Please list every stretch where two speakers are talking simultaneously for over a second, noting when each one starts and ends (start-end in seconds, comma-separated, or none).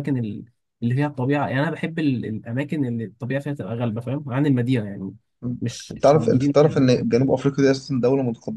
5.6-7.1